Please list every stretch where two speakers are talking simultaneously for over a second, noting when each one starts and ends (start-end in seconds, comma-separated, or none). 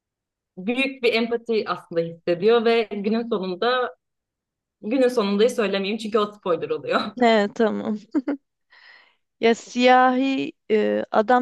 none